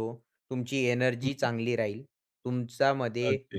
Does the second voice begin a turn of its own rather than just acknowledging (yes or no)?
no